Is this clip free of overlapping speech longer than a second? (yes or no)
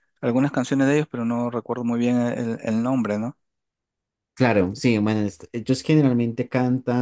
yes